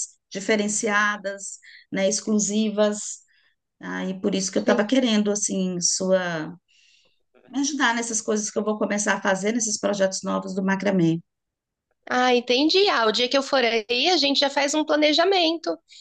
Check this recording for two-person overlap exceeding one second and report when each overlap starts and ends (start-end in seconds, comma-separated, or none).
none